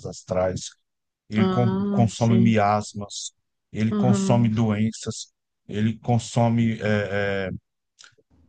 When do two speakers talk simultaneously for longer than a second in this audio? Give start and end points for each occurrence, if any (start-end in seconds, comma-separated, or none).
1.4-2.6